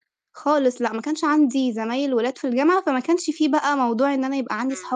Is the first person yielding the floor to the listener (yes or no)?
yes